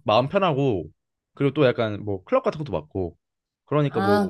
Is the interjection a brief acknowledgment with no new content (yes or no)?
yes